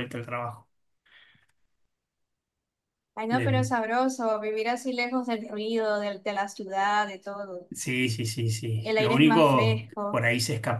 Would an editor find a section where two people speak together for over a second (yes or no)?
yes